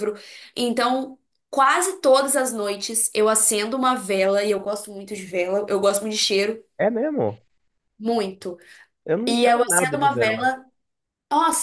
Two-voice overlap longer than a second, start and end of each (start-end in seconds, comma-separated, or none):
9.3-10.5